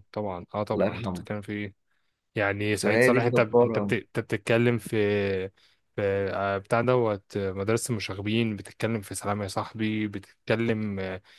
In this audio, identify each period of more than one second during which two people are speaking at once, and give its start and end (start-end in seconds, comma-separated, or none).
2.7-3.9